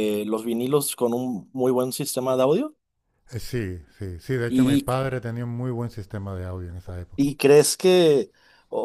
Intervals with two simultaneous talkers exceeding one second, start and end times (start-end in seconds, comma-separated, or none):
none